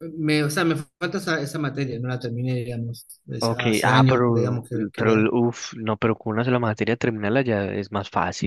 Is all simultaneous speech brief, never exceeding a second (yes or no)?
no